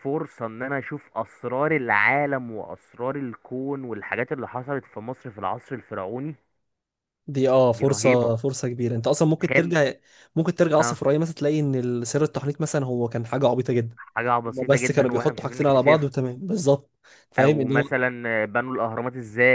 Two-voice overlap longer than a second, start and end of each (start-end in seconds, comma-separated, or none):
14.5-16.1